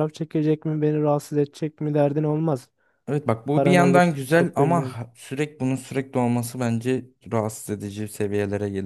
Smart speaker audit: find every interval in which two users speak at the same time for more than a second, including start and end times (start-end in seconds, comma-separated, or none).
3.5-5.0